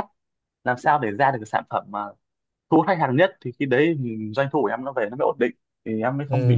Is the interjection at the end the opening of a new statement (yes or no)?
yes